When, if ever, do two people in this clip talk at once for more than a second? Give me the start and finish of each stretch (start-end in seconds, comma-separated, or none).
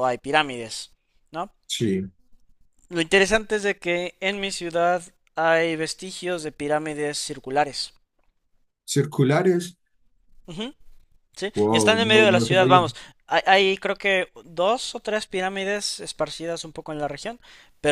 11.5-12.8